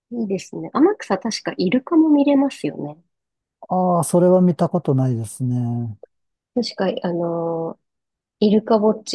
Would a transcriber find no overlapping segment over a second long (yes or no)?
yes